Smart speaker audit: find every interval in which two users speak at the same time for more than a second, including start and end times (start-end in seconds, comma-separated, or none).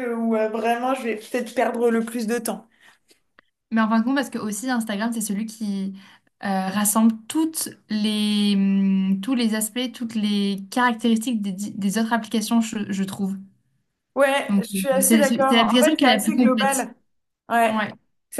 14.5-16.9